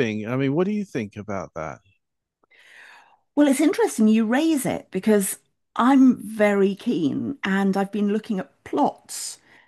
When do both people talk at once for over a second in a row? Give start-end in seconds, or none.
none